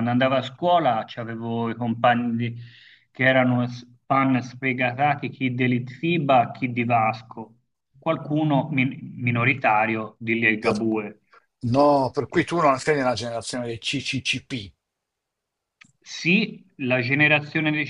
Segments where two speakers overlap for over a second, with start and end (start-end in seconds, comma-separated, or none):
none